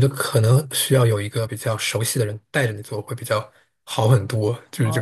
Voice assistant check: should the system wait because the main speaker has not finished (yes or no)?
no